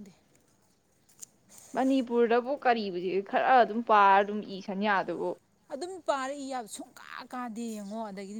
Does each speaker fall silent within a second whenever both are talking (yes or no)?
yes